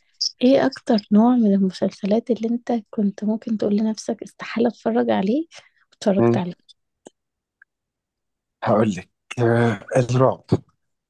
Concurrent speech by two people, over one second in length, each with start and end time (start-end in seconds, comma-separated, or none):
none